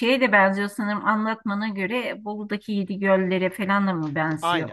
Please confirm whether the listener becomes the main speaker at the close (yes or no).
yes